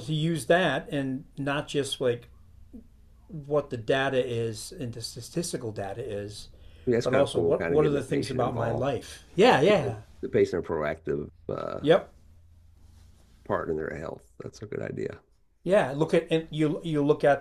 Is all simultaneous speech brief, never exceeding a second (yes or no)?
no